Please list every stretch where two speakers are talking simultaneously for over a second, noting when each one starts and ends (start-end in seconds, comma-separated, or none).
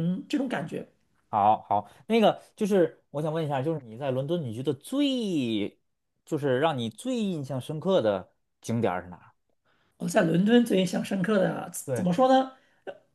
none